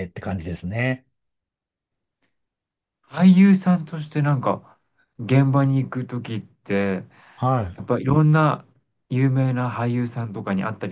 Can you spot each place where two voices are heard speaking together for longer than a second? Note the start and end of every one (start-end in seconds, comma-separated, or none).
none